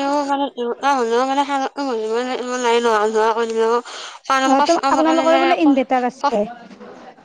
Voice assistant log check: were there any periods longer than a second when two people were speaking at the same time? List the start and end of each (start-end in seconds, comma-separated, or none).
4.5-6.4